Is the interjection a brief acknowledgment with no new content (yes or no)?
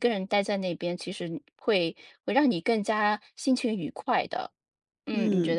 no